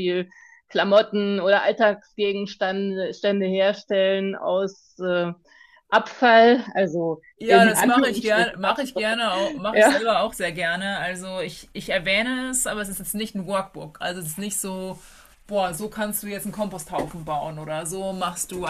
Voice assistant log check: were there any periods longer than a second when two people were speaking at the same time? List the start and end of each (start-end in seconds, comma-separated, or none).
7.4-9.0